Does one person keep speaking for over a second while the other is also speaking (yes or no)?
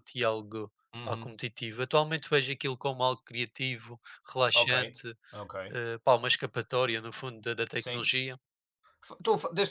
no